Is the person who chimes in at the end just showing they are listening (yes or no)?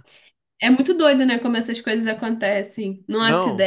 yes